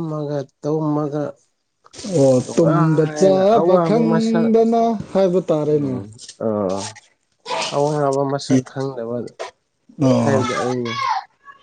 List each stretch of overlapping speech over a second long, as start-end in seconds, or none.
2.4-4.5